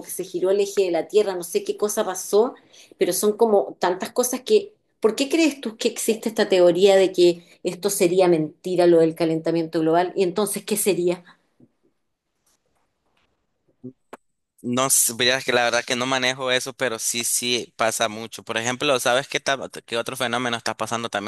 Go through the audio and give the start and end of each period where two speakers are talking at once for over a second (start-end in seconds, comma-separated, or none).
none